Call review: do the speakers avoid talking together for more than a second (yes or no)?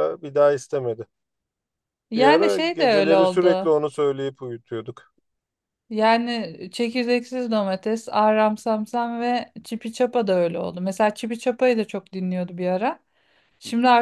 no